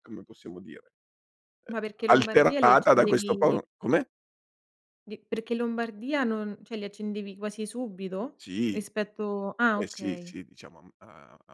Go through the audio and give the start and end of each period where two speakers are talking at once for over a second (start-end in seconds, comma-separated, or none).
1.9-3.6